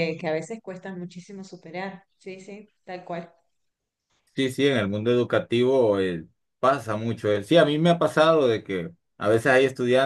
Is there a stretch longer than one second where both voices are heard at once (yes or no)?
no